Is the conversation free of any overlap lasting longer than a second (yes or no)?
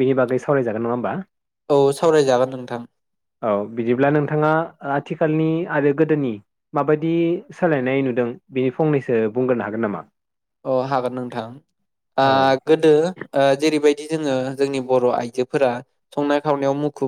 yes